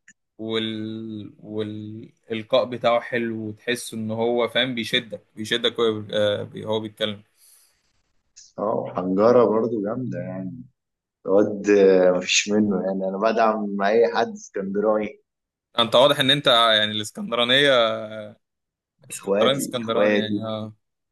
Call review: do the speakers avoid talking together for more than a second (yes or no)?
no